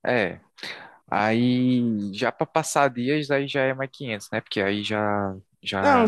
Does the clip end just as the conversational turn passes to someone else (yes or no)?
yes